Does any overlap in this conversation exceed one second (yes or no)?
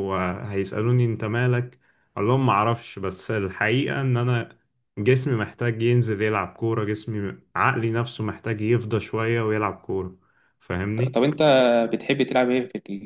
no